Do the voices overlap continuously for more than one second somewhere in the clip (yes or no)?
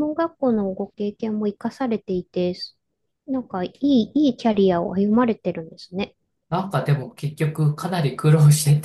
no